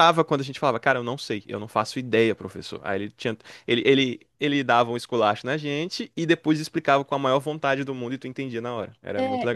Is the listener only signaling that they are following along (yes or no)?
no